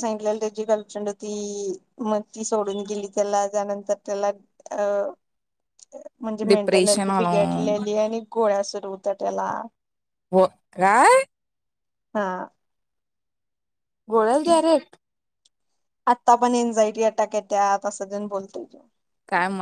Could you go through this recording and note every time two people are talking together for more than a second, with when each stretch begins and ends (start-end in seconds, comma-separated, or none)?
6.5-7.7